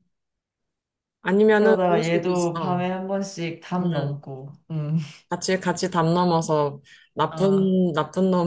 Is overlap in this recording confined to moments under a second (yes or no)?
no